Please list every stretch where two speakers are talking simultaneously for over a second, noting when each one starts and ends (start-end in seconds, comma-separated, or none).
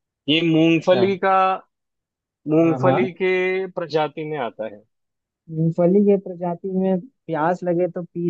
none